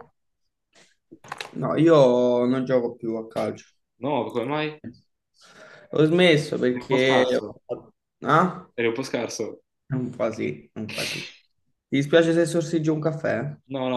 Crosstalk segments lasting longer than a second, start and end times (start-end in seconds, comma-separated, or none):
none